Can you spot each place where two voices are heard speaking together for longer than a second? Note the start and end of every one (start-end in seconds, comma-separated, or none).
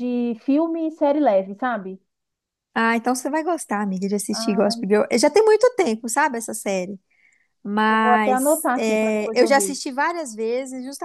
7.9-9.8